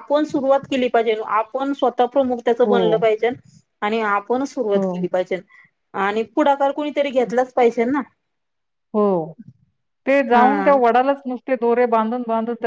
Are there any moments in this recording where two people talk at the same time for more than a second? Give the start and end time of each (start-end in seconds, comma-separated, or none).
none